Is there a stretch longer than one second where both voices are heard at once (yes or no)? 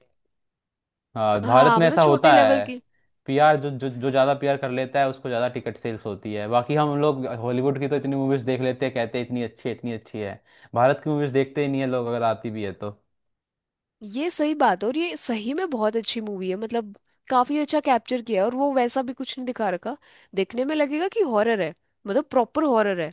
yes